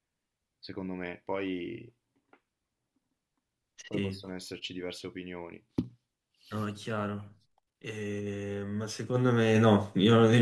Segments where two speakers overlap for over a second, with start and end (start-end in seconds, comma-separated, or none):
none